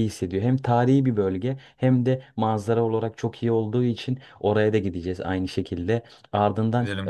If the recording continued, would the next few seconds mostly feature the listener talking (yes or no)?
no